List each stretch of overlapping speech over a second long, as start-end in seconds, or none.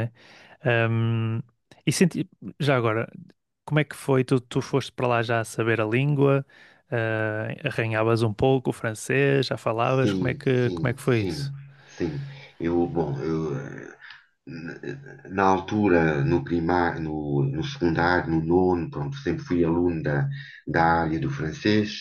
10.0-11.5